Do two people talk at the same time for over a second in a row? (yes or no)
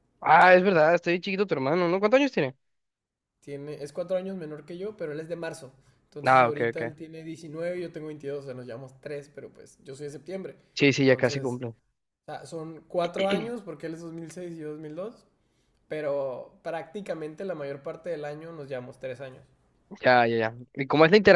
no